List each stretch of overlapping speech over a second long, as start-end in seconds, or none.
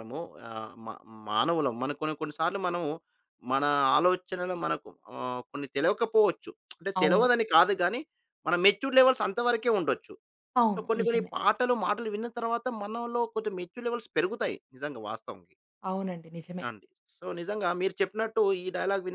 none